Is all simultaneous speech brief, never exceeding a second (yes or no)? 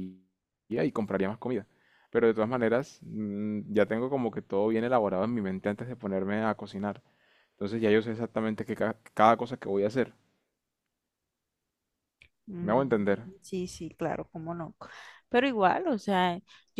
yes